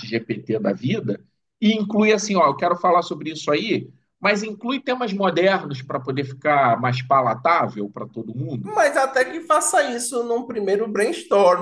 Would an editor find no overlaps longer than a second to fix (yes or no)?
yes